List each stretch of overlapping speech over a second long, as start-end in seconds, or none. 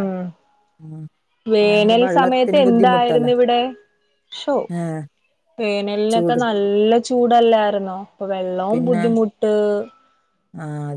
1.6-3.3